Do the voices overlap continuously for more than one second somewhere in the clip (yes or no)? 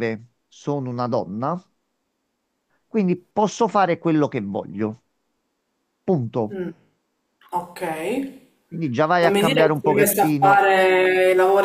yes